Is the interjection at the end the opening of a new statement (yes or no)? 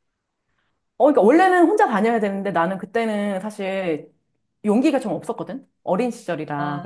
yes